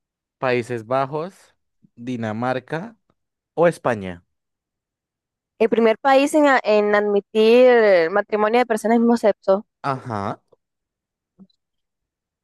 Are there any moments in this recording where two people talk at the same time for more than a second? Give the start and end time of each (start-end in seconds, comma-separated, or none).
none